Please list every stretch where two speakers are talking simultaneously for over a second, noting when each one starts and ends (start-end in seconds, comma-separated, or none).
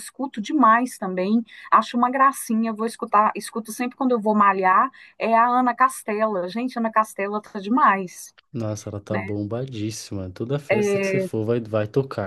none